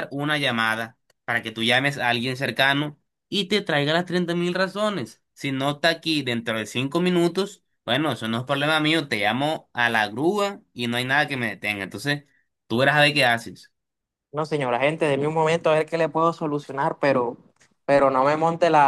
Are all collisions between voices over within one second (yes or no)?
yes